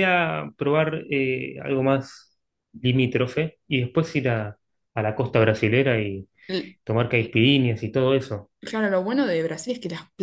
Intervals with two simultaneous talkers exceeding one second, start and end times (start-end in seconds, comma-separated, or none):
none